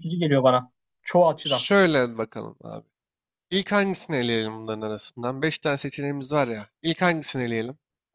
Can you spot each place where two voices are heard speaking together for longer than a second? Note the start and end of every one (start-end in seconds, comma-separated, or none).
none